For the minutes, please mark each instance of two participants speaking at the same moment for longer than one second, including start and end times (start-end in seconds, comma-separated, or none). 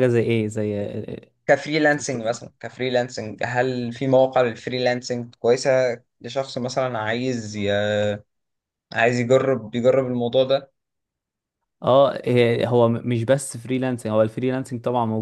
none